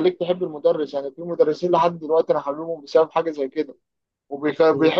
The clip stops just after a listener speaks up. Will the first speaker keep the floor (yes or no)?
yes